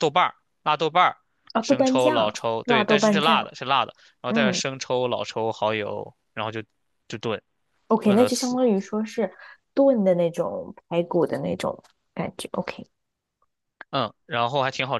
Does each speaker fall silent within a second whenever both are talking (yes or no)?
no